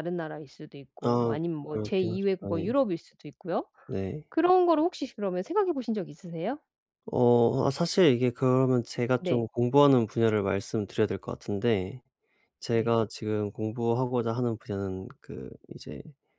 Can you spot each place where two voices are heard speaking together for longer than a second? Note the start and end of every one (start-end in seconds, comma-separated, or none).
1.0-2.7